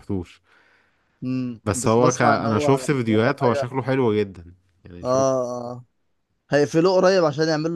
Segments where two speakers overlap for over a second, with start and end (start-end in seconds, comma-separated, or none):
1.6-3.7